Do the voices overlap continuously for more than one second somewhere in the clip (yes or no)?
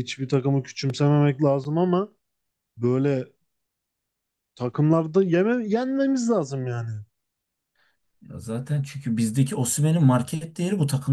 no